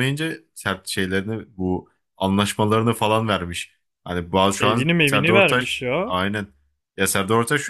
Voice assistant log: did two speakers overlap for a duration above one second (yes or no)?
yes